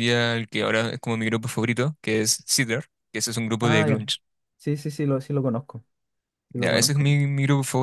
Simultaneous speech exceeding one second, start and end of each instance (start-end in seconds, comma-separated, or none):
none